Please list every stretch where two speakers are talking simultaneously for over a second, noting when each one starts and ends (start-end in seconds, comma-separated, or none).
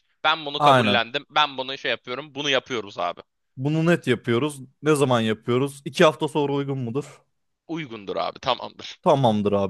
none